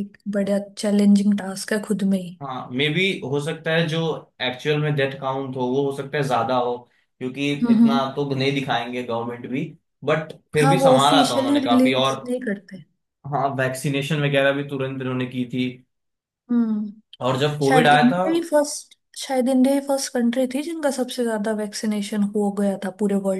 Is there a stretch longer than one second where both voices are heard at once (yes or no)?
yes